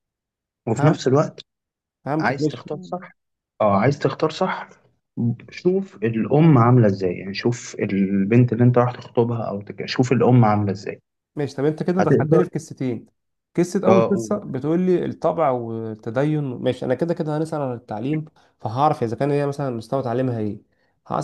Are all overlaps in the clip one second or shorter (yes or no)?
yes